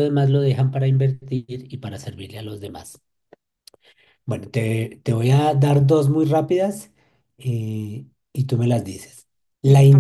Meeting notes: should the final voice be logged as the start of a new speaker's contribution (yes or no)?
no